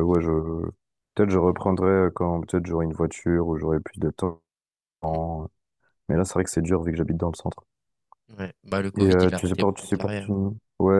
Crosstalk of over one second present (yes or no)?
yes